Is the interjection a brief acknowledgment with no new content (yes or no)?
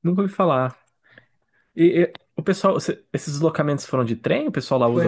no